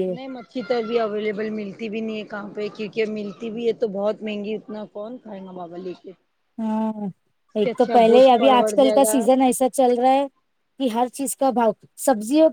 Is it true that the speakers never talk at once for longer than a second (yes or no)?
no